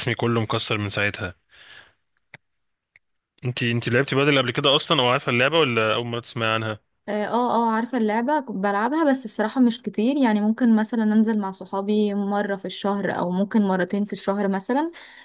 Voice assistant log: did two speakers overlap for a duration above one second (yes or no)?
no